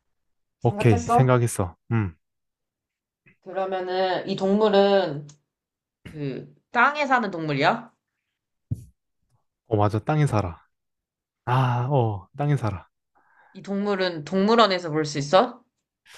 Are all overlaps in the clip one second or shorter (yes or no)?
yes